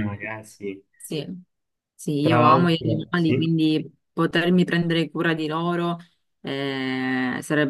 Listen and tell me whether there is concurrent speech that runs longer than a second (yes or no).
yes